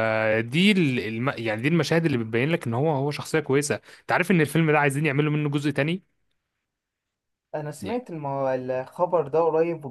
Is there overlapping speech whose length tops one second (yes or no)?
no